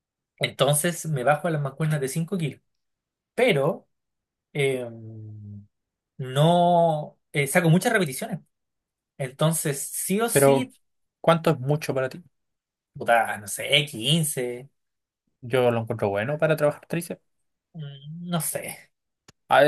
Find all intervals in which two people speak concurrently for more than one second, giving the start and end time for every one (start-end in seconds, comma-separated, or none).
none